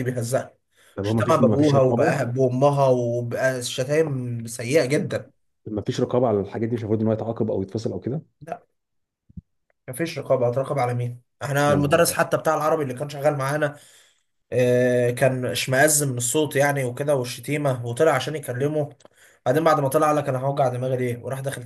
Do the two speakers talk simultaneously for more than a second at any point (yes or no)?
yes